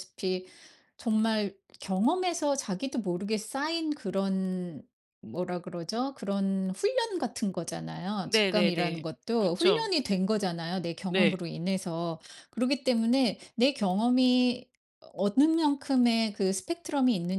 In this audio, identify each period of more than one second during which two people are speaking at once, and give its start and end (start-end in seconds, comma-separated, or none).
8.3-9.9